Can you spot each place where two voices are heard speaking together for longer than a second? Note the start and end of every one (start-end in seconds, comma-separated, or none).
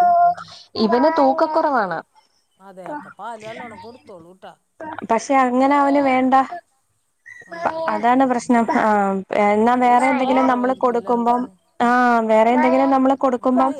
9.7-11.4